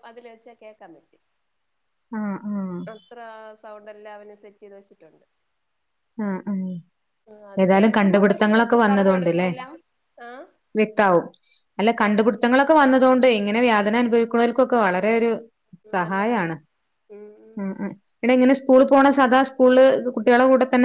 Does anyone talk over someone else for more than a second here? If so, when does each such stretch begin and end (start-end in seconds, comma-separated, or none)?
7.8-9.5